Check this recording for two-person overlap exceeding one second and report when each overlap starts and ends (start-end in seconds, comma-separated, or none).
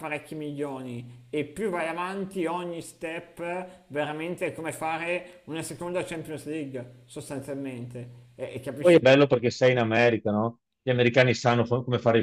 none